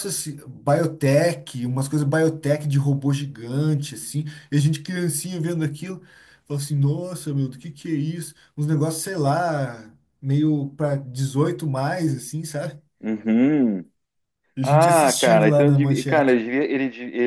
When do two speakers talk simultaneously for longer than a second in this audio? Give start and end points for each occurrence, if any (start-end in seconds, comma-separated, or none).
14.6-16.4